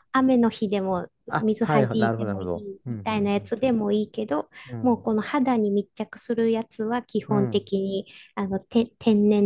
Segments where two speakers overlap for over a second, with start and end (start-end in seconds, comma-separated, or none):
1.3-2.9